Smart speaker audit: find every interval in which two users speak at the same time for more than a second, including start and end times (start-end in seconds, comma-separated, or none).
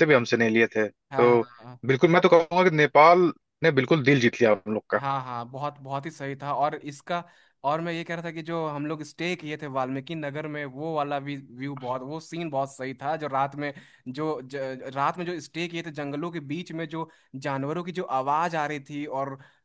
none